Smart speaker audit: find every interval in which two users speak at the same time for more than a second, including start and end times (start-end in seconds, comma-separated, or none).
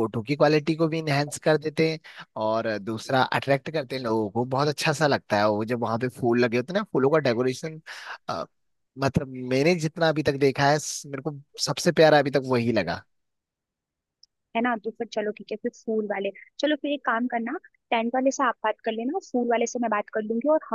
none